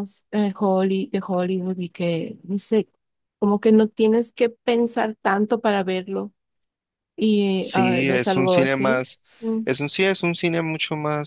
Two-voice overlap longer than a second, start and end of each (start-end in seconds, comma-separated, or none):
7.6-9.0